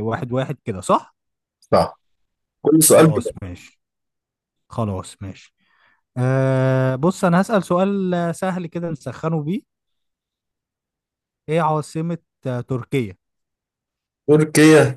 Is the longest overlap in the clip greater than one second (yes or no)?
no